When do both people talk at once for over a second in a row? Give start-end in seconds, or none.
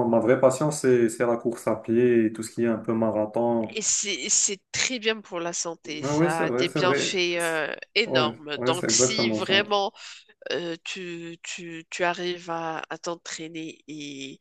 6.0-9.5